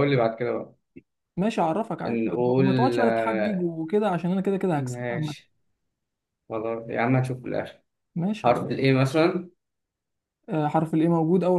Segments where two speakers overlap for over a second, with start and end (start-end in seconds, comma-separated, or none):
2.1-3.7